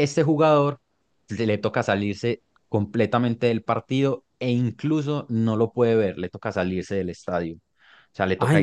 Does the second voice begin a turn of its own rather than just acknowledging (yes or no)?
yes